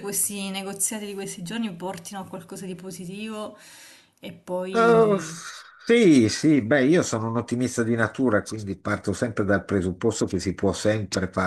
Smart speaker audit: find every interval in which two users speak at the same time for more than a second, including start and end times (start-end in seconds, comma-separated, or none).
none